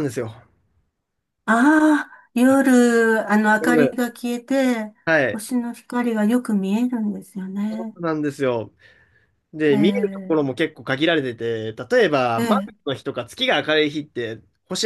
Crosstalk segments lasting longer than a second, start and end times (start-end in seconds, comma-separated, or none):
none